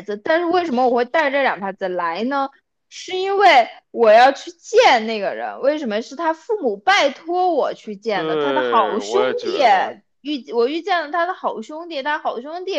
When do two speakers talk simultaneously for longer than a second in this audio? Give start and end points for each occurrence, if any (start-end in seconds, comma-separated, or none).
8.1-9.6